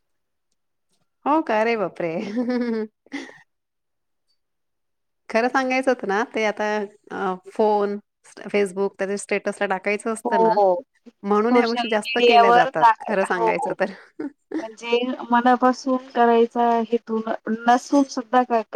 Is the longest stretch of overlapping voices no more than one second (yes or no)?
no